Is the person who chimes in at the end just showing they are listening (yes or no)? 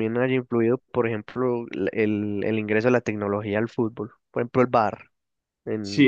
no